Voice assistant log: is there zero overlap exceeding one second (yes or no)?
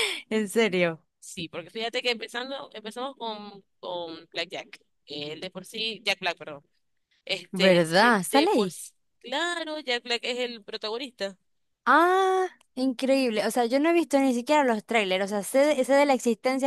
no